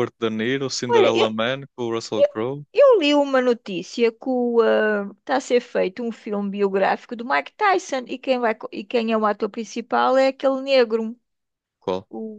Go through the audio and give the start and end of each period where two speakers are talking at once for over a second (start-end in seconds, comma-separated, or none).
none